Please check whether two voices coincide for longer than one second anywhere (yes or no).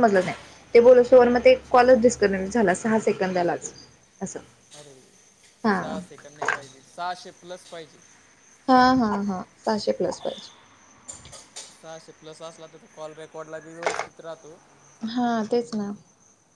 no